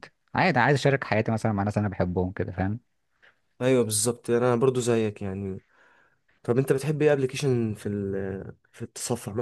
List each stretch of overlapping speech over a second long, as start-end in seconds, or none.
none